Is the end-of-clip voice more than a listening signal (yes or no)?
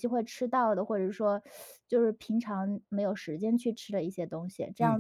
yes